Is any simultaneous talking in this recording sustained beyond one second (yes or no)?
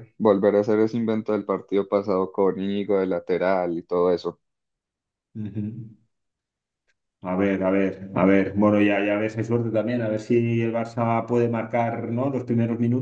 no